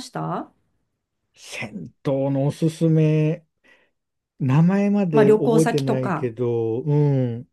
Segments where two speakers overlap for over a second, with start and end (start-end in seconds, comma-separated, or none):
5.1-6.3